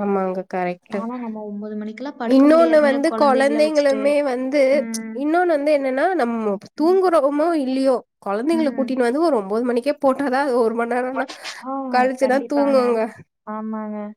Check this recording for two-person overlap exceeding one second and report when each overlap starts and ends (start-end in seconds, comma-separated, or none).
2.4-4.0